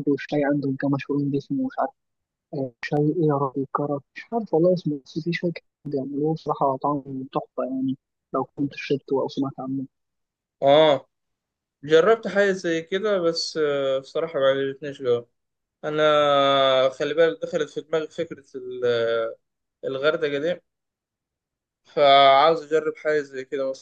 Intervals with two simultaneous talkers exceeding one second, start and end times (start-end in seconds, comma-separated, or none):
none